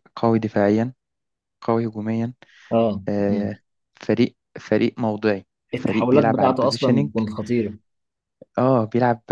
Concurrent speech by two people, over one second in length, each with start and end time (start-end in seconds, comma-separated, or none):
5.7-7.1